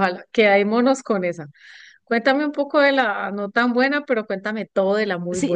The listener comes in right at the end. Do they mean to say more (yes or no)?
yes